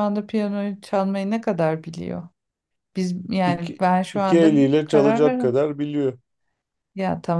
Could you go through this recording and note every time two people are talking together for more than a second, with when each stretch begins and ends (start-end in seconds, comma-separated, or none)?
3.4-5.6